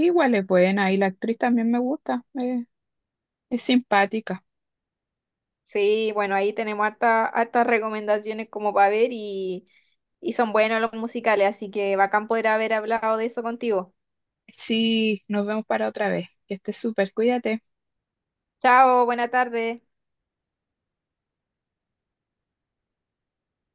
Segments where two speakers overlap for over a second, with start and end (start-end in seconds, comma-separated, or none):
none